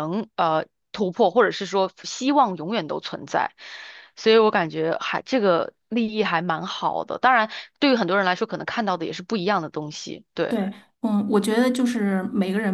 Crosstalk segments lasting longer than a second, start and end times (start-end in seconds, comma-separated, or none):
none